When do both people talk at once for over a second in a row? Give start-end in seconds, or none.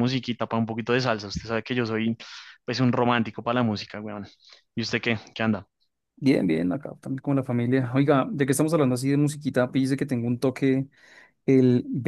none